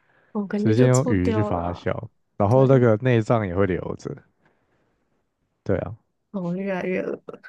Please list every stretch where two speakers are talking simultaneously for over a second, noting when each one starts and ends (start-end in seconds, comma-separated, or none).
0.6-1.9